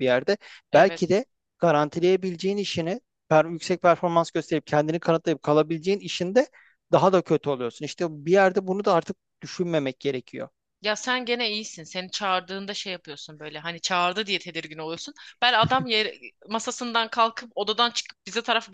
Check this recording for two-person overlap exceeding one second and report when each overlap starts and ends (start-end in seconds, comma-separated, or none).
none